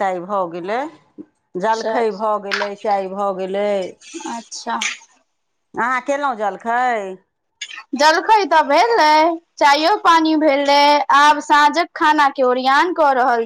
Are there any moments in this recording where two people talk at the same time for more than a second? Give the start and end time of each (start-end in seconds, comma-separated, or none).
none